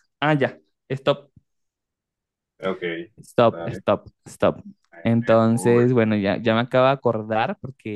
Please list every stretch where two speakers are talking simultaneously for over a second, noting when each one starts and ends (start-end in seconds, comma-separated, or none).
5.0-6.6